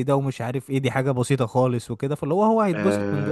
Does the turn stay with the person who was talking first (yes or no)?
no